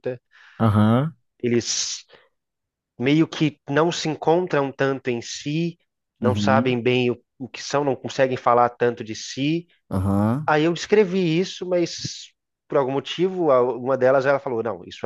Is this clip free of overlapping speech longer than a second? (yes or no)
yes